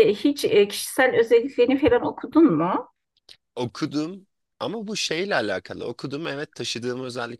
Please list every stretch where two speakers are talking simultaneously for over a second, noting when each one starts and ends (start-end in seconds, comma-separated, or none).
none